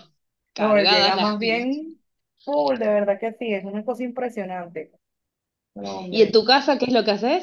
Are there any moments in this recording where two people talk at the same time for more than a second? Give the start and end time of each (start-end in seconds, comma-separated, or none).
0.6-1.8